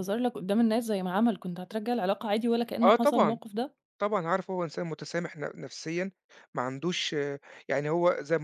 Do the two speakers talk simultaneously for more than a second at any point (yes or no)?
no